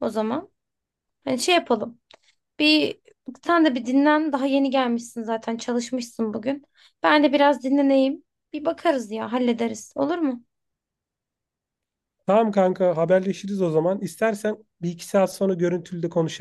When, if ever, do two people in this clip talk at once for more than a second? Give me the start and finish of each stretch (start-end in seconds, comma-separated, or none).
none